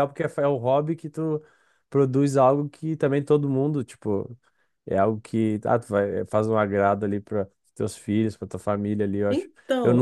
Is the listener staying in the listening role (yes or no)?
yes